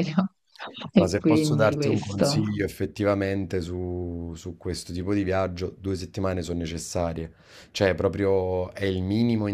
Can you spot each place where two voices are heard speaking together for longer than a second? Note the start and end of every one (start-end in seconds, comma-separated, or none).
1.0-2.4